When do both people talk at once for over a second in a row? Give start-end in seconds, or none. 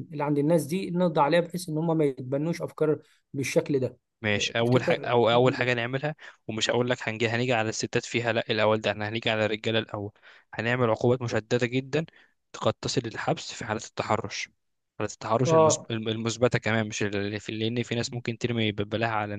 4.4-5.9